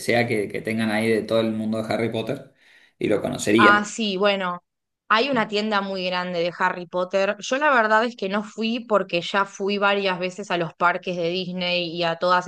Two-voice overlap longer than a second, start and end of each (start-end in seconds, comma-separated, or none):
none